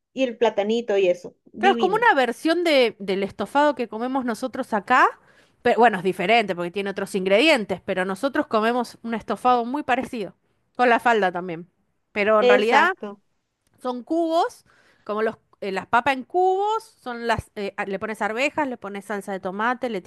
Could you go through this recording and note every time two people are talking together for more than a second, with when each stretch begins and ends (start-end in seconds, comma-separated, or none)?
none